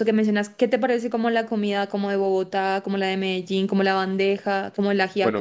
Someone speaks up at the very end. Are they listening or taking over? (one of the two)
taking over